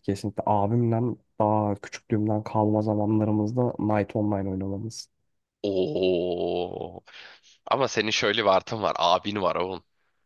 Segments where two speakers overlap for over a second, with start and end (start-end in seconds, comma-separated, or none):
none